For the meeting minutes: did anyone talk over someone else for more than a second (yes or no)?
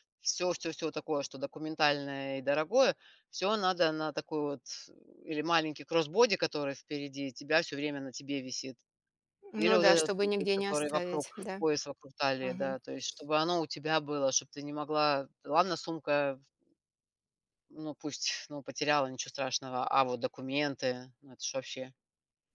yes